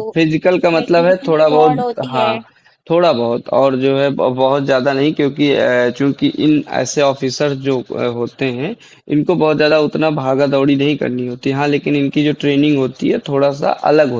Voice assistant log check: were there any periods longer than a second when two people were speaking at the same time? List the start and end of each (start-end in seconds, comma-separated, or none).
0.5-2.3